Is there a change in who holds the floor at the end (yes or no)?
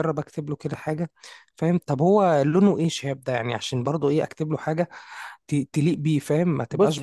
yes